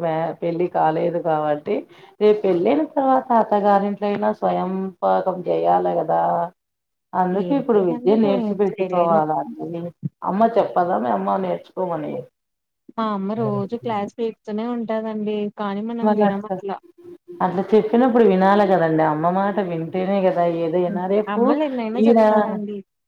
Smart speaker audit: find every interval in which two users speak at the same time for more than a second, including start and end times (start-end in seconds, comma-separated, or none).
7.4-9.2